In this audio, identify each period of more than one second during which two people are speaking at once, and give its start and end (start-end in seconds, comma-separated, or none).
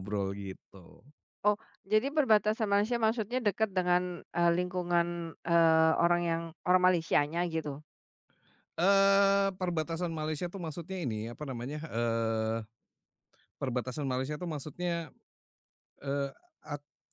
none